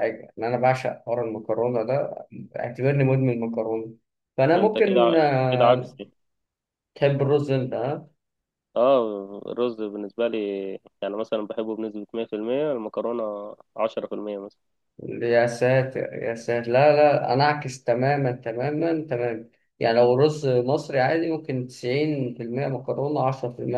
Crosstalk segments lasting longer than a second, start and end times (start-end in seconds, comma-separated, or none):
4.5-6.0